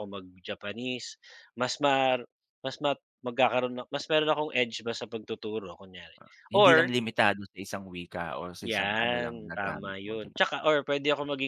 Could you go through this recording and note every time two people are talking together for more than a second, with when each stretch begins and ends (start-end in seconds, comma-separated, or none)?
8.6-10.7